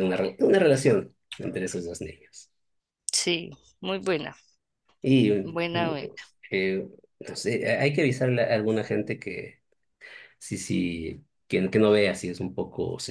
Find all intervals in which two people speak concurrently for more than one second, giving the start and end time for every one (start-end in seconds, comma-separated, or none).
none